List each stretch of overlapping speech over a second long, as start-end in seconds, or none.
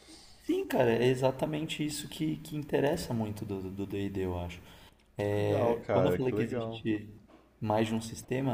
5.2-6.8